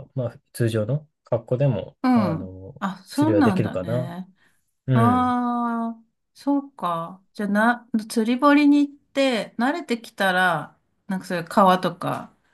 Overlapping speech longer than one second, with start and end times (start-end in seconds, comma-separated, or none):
2.0-4.1